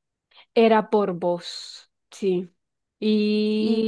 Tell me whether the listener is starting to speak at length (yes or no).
yes